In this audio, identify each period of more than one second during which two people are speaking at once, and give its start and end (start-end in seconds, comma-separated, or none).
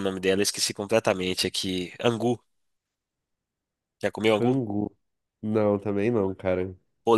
none